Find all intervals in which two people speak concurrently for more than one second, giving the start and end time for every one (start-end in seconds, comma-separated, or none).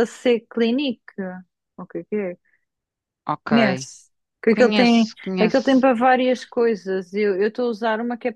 4.5-5.9